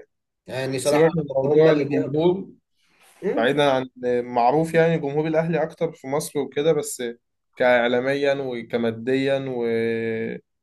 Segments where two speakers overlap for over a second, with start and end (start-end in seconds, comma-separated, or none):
0.8-2.2